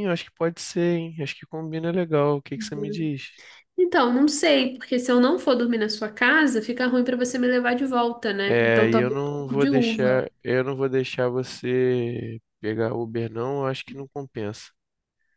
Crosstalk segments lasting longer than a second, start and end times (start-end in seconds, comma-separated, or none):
8.5-10.3